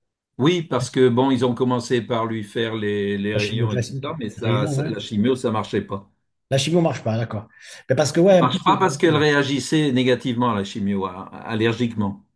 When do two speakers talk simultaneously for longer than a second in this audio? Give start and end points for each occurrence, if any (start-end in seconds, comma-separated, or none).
3.3-5.0